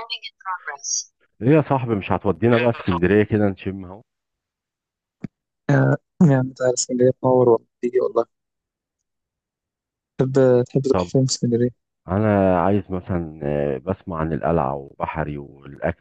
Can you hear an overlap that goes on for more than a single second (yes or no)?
no